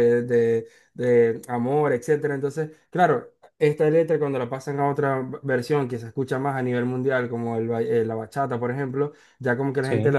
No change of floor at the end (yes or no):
yes